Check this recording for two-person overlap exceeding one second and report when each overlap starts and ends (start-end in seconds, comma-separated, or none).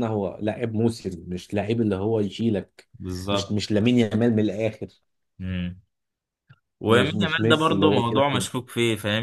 6.9-8.4